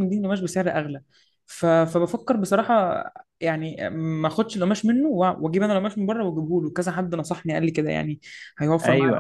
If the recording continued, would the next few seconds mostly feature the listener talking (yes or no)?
yes